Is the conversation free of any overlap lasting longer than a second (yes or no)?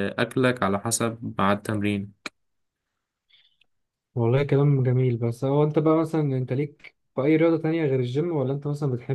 yes